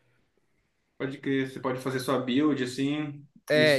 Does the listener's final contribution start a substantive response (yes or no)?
yes